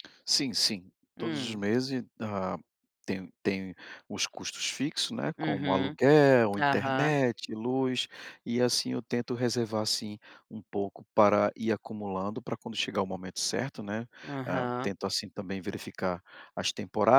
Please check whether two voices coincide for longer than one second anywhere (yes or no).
no